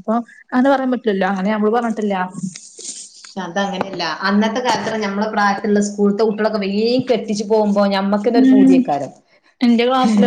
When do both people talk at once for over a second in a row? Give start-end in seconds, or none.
none